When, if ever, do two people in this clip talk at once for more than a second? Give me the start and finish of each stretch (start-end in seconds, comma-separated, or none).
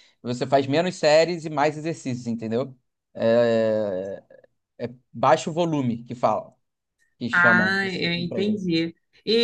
7.3-8.6